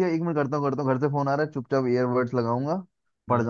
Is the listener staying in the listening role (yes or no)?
yes